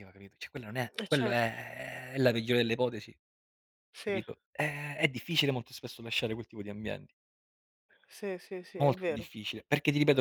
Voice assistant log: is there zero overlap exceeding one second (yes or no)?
yes